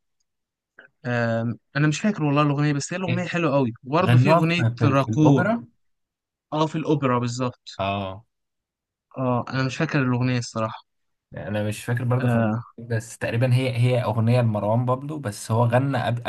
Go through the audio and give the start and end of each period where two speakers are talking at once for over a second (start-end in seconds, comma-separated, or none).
4.0-5.5